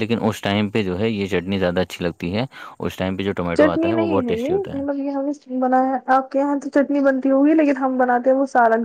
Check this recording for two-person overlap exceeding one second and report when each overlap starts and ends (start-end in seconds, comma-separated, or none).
3.6-4.8